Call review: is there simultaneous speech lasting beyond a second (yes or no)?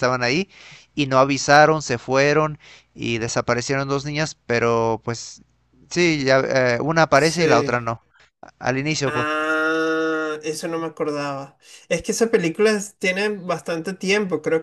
no